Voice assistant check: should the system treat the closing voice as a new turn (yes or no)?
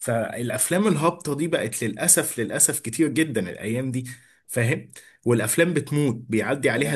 no